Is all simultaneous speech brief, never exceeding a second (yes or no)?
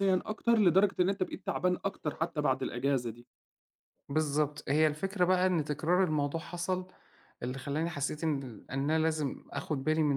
yes